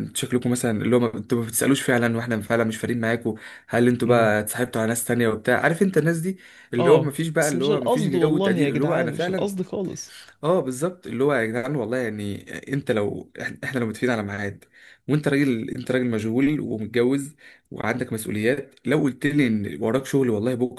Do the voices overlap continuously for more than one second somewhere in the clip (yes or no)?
yes